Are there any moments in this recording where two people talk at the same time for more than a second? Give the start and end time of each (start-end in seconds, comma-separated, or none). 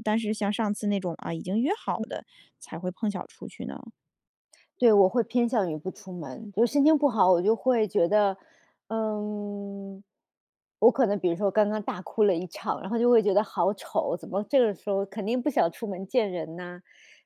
none